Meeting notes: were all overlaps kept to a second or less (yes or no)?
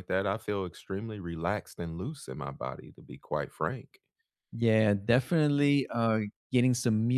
yes